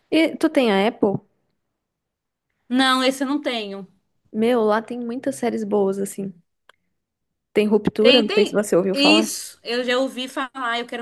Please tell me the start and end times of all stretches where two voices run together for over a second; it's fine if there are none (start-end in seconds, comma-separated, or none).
8.0-9.3